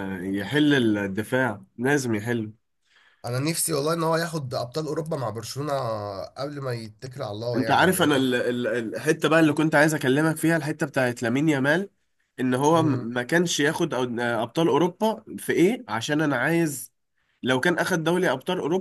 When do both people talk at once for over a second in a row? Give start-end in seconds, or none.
none